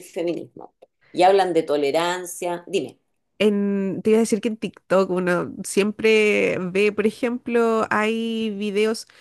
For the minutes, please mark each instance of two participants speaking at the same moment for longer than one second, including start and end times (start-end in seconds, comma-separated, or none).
none